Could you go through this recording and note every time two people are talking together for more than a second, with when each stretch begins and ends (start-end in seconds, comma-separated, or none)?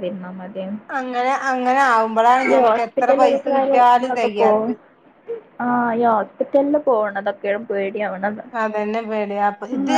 2.5-4.7